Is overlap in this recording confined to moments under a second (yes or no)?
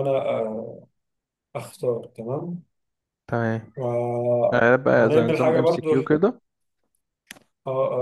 no